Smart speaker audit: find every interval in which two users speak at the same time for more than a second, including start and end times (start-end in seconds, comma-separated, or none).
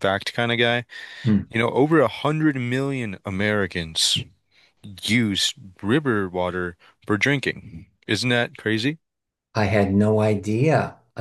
none